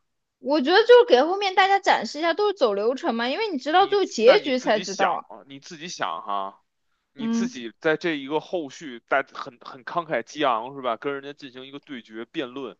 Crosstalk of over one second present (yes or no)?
yes